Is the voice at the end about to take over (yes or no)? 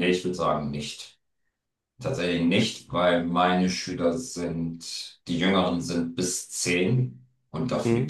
no